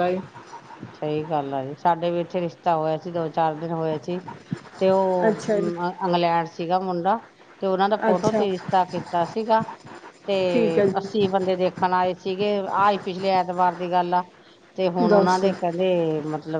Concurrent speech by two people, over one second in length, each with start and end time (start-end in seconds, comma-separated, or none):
none